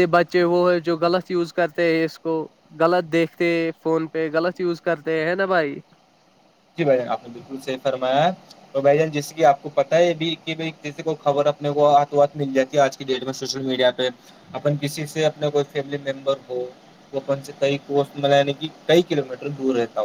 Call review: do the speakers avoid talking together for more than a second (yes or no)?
yes